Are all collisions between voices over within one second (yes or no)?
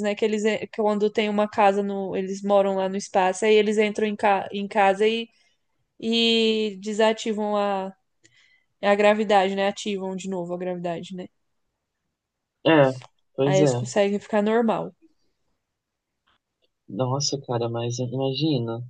yes